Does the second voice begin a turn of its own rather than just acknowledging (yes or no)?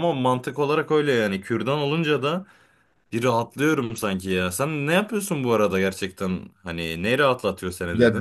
yes